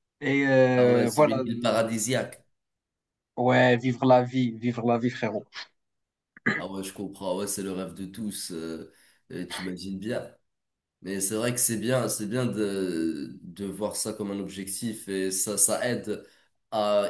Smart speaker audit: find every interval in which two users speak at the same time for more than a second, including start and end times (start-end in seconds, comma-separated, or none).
0.8-2.1